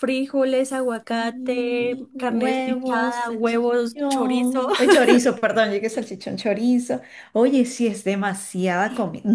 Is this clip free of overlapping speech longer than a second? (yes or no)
no